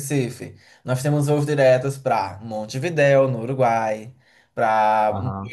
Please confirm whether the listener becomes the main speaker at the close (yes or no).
no